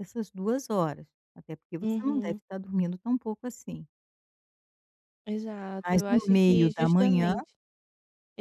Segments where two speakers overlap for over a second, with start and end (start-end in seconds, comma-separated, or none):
5.8-7.3